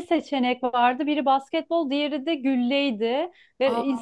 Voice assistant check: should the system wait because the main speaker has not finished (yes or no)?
yes